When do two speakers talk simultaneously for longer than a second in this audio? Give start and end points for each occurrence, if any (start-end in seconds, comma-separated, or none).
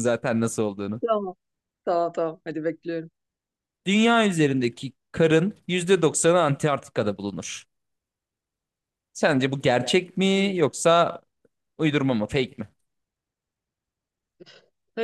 none